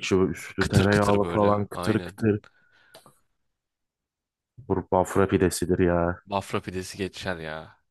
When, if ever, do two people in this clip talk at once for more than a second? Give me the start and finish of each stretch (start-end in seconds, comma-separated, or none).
0.6-2.2